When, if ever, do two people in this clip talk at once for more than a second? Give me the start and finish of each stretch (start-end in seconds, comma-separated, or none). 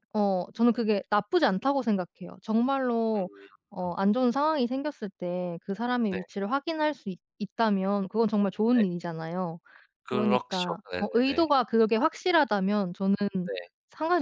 10.1-11.5